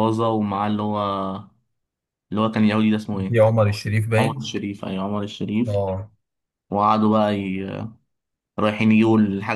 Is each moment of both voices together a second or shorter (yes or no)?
yes